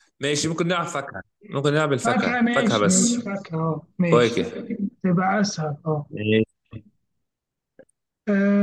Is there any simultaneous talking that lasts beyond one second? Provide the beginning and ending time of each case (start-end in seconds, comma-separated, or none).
2.0-3.2